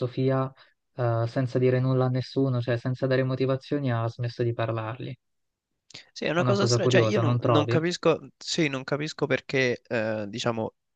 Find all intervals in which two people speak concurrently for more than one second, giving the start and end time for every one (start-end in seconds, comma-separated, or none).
6.3-7.8